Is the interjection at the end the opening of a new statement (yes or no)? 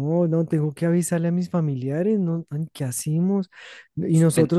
no